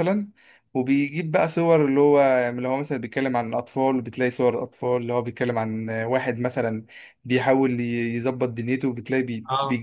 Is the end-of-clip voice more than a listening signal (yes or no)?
no